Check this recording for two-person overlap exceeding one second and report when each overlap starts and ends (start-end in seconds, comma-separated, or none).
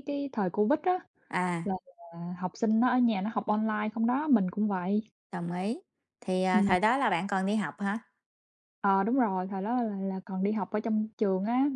none